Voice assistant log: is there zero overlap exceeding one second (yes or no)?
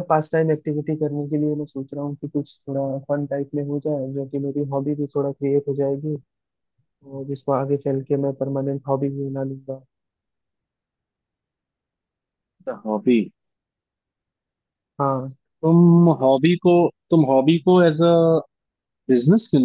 yes